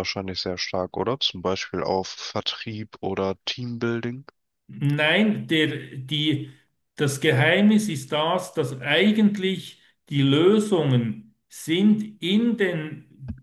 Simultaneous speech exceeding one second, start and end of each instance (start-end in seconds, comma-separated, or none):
none